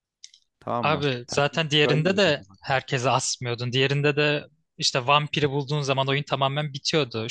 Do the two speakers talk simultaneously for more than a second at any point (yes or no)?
yes